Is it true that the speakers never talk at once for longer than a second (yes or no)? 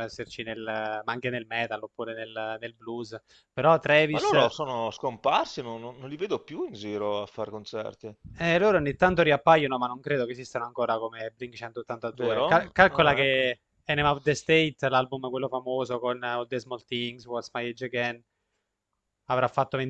no